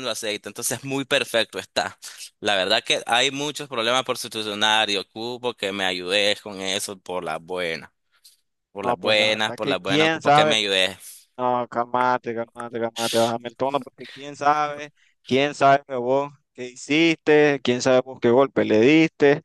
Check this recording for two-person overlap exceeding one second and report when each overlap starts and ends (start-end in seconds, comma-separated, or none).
8.8-10.6